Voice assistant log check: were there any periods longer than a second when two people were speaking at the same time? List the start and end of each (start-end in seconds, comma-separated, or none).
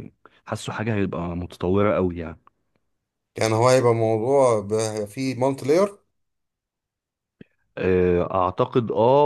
none